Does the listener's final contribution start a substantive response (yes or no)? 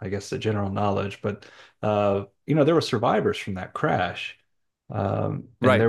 no